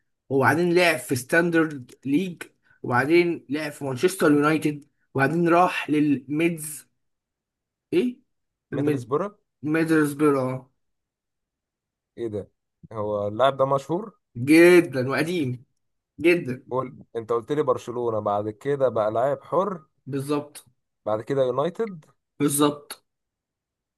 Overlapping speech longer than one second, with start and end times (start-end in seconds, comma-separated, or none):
none